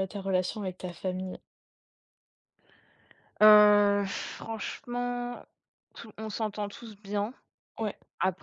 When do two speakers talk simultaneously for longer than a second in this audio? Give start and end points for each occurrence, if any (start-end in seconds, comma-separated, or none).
none